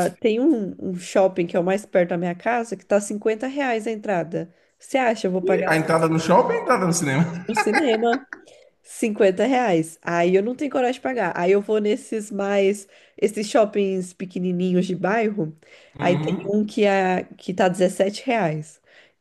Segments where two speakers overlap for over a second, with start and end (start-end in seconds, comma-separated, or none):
none